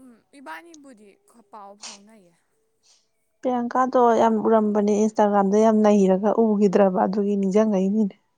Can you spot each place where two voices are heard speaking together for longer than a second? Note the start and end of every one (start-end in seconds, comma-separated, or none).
none